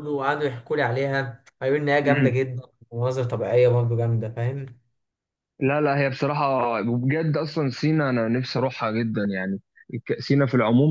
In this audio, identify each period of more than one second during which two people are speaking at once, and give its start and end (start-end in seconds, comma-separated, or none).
none